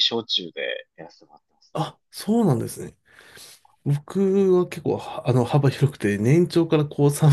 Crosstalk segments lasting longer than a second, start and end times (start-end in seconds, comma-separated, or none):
none